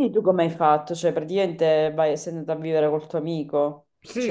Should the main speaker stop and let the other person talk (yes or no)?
yes